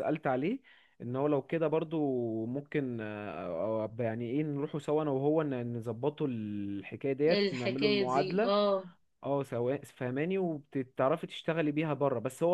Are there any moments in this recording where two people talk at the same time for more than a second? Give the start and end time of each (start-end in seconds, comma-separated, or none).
7.3-8.5